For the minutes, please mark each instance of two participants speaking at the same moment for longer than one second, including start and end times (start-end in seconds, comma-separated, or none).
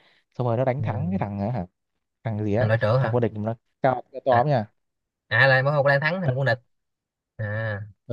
none